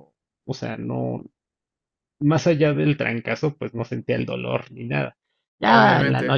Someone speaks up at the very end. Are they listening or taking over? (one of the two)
taking over